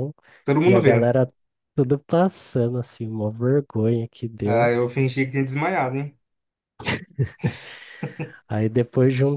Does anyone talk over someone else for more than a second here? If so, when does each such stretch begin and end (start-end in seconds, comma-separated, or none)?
none